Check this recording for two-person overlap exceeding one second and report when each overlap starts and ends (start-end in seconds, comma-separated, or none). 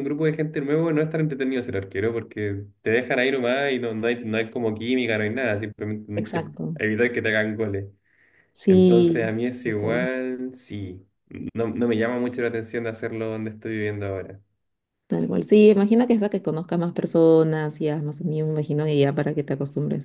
8.6-10.1